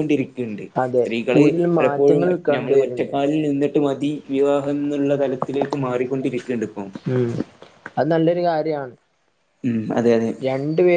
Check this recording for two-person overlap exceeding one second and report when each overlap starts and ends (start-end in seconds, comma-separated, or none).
1.0-3.1